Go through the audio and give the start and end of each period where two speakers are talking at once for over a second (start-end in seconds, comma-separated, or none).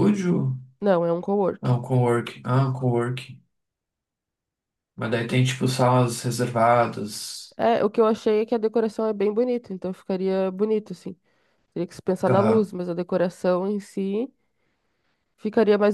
none